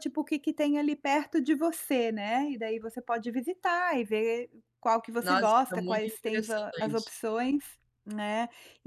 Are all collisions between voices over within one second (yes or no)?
no